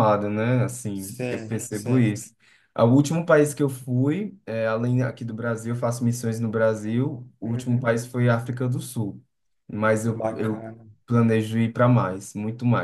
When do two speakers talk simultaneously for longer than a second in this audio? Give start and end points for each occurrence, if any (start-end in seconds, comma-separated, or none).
0.9-2.2